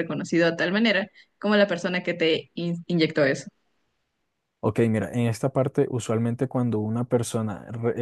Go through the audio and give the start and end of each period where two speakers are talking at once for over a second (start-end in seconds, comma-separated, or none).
none